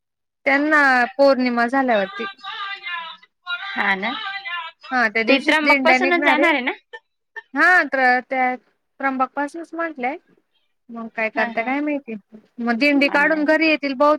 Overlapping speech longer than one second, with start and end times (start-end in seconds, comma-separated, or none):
5.3-6.5